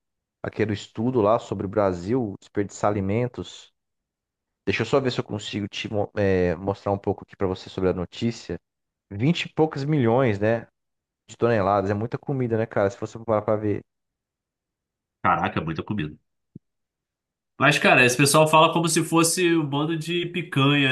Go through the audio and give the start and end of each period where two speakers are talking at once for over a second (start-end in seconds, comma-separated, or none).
none